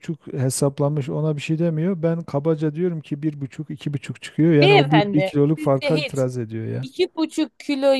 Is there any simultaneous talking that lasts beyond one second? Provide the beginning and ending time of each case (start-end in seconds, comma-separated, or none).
4.6-6.2